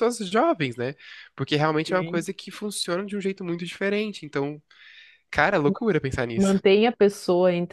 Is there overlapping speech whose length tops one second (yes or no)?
no